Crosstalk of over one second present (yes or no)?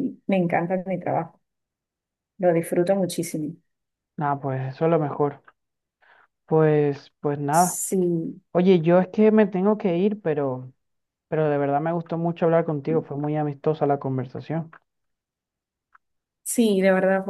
no